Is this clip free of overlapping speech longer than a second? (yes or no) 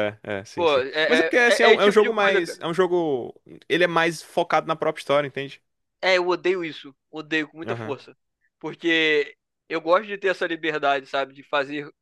no